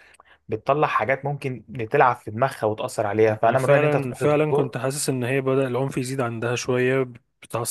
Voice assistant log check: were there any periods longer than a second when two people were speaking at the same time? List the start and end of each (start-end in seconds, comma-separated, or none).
3.5-4.8